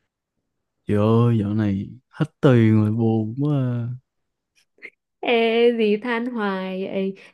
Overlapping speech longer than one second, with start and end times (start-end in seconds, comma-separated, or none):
none